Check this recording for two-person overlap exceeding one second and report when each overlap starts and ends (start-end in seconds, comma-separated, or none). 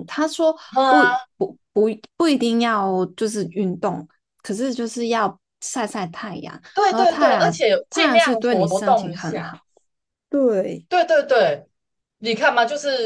6.7-9.5